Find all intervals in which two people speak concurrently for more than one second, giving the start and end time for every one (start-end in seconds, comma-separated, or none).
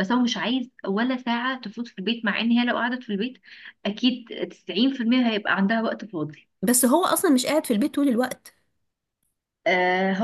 none